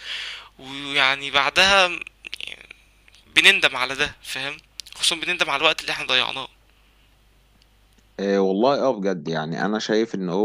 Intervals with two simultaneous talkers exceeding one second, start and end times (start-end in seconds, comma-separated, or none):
none